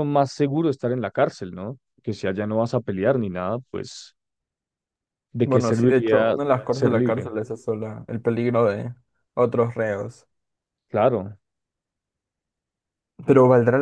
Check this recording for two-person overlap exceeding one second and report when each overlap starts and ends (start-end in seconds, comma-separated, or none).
5.4-7.3